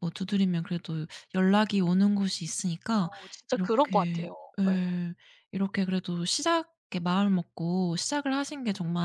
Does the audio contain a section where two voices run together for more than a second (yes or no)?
yes